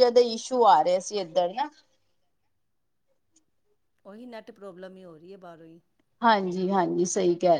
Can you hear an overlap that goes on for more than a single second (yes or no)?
no